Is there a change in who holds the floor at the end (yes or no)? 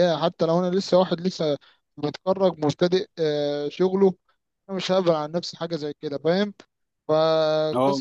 no